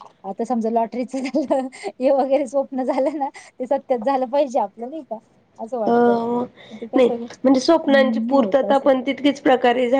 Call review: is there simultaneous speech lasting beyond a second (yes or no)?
yes